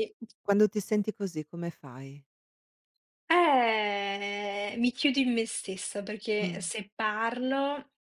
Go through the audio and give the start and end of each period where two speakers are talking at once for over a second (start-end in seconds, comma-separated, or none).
none